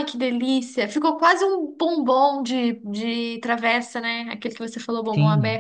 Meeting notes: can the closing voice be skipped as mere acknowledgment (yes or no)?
no